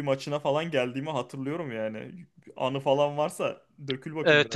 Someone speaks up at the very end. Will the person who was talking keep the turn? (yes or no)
no